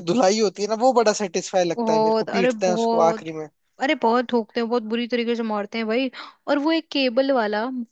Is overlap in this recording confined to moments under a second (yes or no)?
no